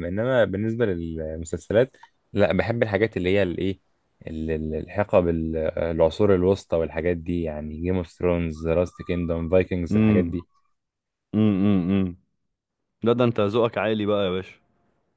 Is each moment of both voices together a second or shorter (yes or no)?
yes